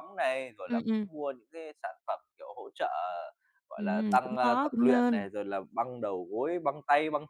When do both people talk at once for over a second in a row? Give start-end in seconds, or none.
3.8-5.2